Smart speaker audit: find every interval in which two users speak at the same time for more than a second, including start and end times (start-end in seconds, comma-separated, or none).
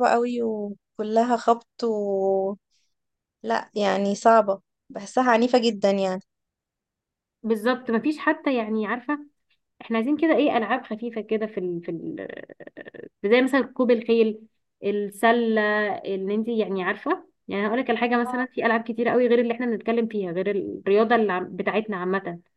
none